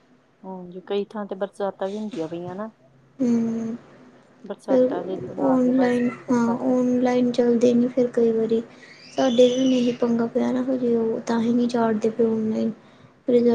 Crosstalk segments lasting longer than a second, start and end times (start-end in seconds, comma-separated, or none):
4.7-6.7